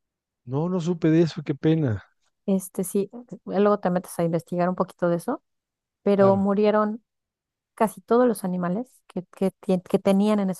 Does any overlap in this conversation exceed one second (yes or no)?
no